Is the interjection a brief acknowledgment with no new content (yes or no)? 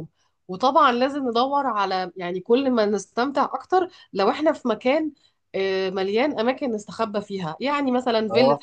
yes